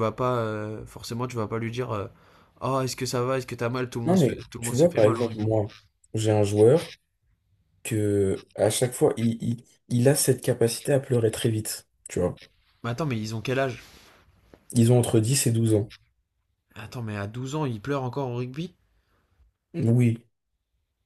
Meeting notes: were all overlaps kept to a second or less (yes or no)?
no